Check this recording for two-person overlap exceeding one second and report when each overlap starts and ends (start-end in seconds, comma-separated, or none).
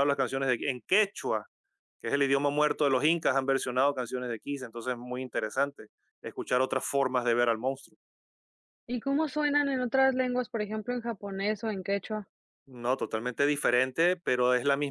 none